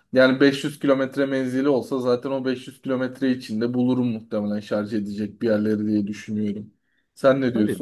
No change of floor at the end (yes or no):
no